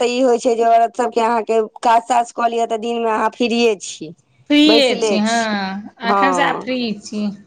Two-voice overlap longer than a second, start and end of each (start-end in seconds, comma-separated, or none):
none